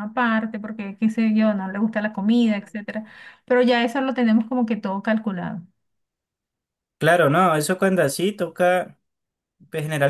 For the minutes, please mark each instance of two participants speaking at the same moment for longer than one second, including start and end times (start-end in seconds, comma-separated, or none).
none